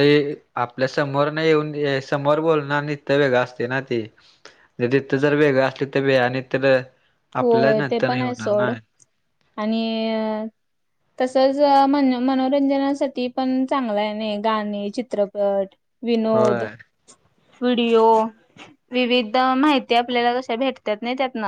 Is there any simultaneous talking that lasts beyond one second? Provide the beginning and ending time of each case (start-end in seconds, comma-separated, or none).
7.4-8.7